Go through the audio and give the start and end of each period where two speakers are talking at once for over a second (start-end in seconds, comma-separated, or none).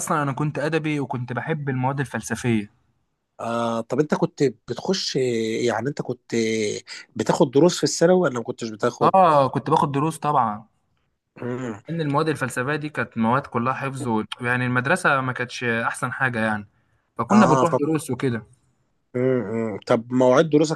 none